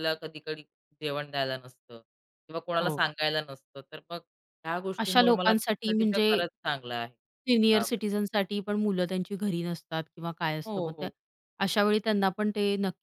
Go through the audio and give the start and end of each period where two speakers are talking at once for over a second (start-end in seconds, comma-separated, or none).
5.0-6.3